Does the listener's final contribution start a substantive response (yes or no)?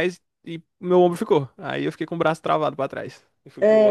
yes